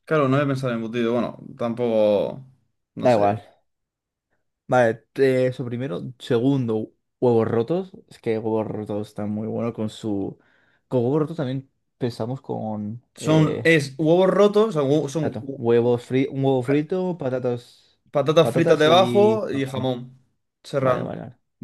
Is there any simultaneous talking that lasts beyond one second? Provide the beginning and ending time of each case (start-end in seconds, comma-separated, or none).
18.4-19.9